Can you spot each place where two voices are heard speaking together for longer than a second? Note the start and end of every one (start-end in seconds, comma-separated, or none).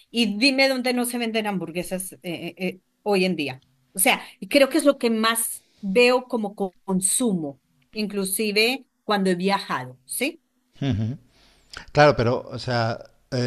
none